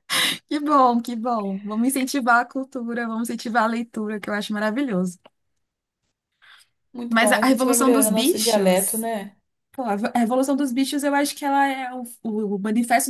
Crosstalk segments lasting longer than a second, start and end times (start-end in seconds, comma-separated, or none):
7.1-9.1